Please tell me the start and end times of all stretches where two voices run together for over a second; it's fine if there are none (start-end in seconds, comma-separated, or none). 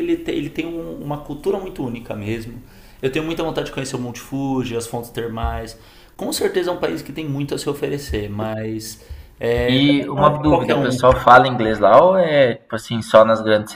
9.7-11.1